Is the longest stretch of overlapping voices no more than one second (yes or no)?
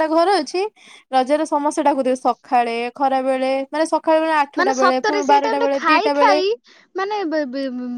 no